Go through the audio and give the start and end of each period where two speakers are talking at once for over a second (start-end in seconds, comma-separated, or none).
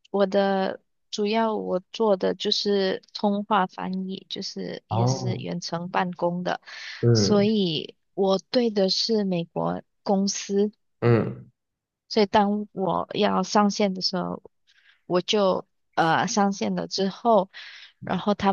none